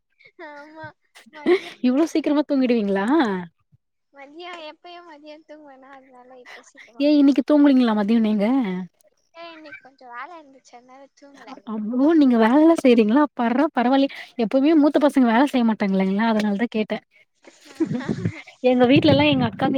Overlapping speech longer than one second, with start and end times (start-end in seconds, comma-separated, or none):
none